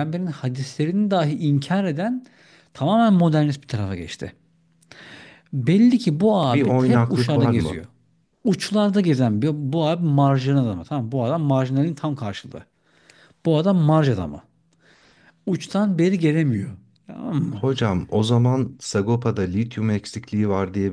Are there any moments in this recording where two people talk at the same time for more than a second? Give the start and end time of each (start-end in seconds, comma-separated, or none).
6.5-7.8